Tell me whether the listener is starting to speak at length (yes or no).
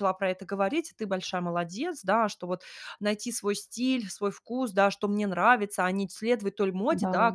no